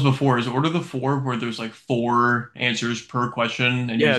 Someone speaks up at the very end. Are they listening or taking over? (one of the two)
taking over